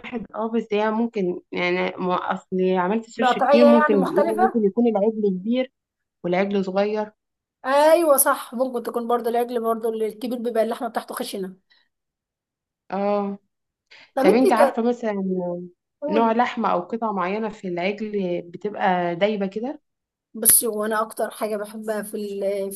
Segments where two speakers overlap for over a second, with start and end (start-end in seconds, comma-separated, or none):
3.2-4.6